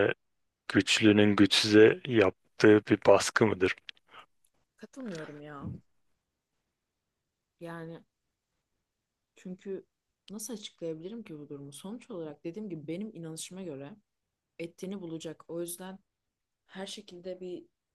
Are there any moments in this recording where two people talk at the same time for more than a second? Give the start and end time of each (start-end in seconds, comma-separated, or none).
none